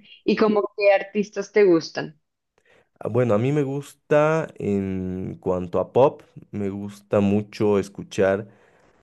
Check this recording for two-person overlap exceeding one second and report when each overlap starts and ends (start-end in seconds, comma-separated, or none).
none